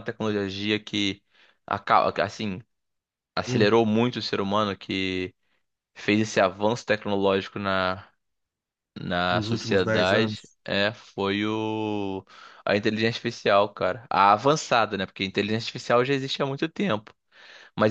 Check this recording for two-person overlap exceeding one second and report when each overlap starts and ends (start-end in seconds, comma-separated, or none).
9.3-10.6